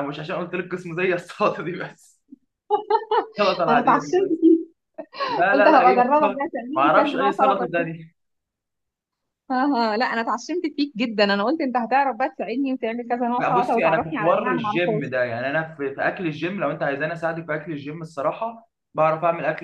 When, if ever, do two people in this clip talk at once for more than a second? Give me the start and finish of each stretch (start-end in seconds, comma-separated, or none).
5.5-8.0, 13.4-15.0